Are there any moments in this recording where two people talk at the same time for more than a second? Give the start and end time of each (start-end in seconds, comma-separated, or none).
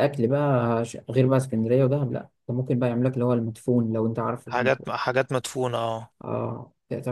none